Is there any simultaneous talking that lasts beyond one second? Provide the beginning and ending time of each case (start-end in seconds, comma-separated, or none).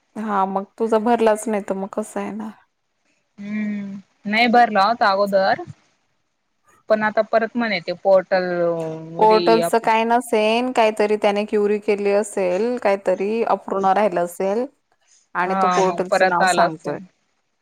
15.4-16.9